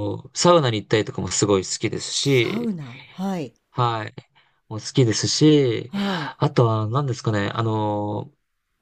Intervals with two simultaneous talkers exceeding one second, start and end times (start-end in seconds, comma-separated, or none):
none